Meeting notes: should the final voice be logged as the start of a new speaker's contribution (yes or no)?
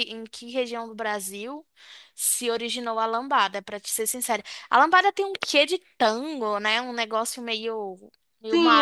yes